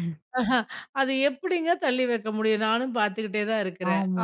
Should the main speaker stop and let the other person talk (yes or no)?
yes